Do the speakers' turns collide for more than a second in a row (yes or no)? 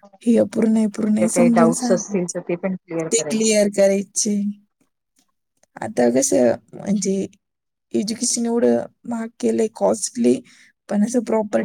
yes